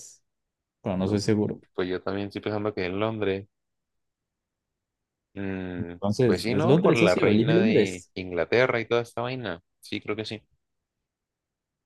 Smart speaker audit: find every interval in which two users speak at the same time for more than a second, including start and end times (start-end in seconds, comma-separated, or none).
5.8-8.1